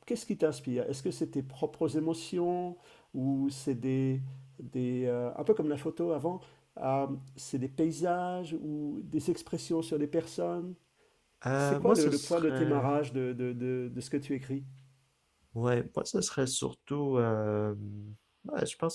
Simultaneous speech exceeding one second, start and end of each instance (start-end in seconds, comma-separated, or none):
11.6-12.9